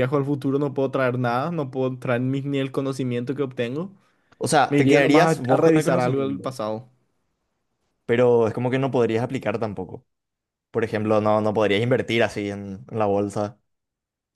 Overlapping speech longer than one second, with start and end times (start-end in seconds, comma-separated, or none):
4.7-6.6